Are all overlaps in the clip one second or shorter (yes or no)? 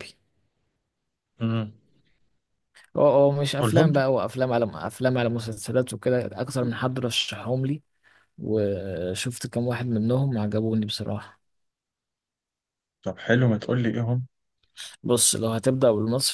yes